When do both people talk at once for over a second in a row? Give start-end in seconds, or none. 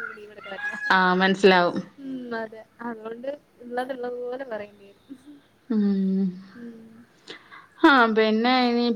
none